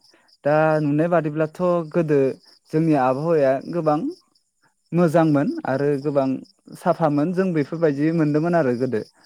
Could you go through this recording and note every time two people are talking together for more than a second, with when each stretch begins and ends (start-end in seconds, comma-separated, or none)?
7.1-8.5